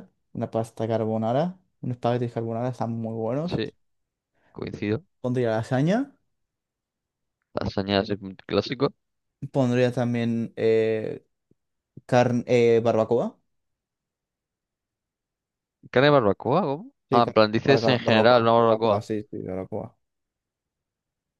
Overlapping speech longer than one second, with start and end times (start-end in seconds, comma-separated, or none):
17.1-19.0